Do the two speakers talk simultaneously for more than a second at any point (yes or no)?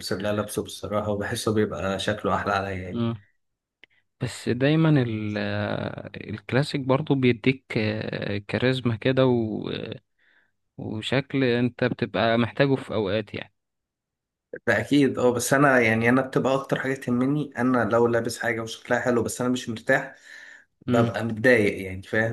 no